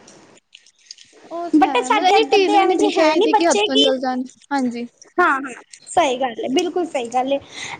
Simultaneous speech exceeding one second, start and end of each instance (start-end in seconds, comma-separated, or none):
1.6-3.1